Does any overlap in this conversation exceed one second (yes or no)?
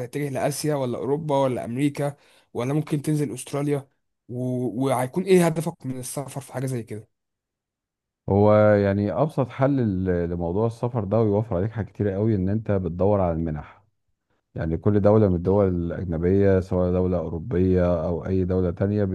no